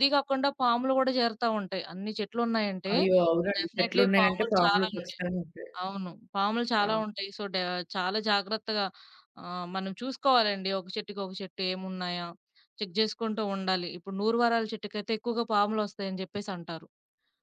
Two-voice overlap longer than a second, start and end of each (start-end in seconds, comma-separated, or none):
3.6-5.2